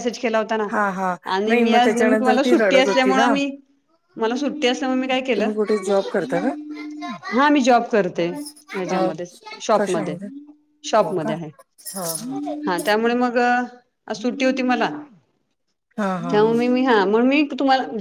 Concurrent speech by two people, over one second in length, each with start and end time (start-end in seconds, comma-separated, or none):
1.4-3.3